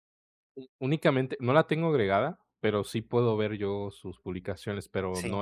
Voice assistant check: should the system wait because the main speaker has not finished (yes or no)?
yes